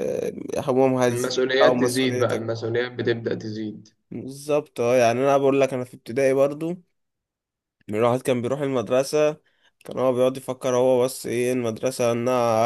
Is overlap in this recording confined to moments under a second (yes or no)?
no